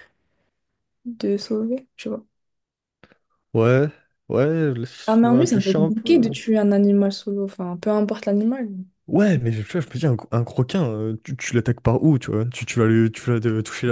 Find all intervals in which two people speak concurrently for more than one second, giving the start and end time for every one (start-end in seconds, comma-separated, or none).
5.0-6.3